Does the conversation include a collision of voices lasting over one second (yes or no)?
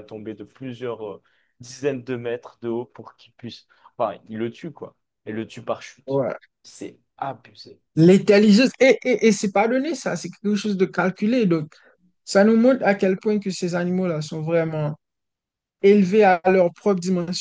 no